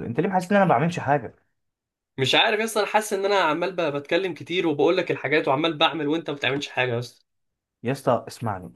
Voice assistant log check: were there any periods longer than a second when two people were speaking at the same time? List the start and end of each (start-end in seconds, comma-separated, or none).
none